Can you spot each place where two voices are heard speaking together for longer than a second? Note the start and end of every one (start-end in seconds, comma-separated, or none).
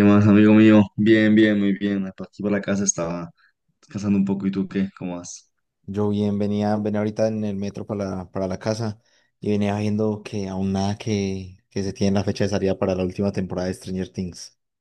none